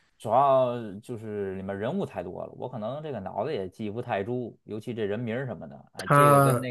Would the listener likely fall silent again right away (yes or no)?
yes